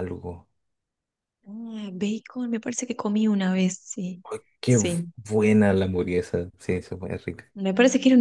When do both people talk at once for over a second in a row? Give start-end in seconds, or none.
none